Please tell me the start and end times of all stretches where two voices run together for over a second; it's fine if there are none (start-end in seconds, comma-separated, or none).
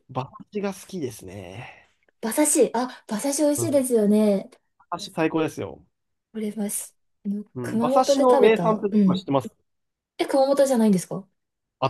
7.5-9.2